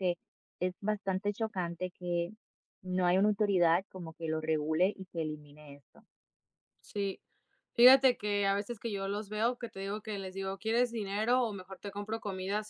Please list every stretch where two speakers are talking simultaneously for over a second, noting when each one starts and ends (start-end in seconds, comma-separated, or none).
none